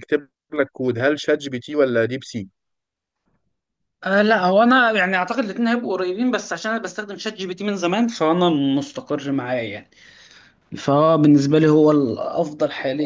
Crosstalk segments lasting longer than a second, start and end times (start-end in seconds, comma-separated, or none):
none